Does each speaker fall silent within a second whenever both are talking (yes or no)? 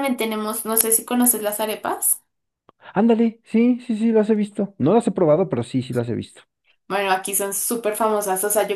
yes